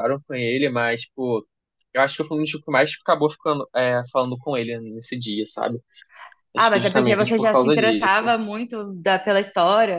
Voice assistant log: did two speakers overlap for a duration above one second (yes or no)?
yes